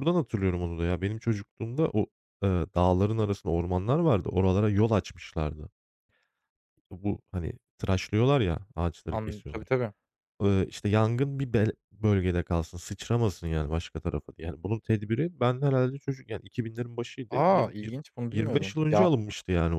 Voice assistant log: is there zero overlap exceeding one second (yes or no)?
no